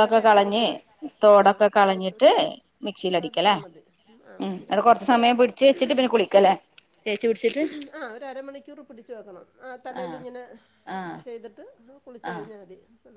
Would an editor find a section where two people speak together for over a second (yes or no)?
yes